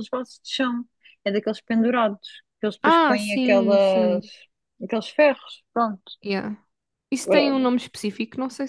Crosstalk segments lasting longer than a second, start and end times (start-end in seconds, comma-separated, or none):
2.8-4.3